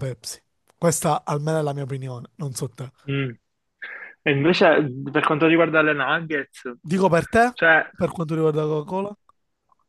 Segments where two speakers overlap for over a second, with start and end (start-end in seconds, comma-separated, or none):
none